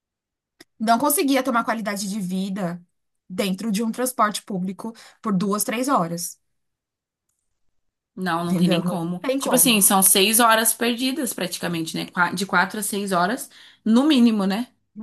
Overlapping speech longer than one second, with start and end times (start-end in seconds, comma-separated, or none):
8.4-9.8